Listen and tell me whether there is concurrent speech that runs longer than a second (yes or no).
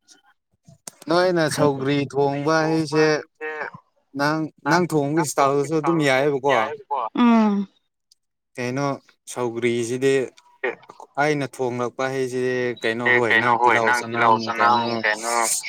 yes